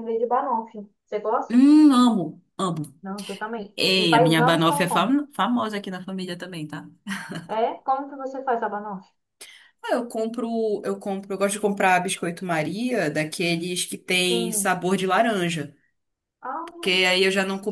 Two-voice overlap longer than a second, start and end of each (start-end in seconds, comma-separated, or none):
3.7-5.2